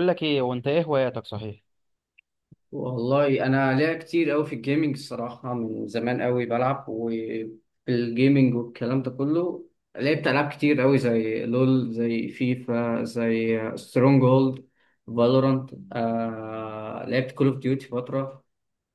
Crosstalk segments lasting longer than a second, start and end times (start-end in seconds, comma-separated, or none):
none